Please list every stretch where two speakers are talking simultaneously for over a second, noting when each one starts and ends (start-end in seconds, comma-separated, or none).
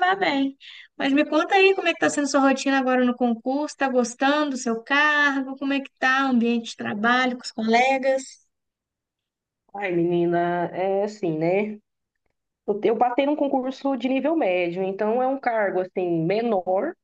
none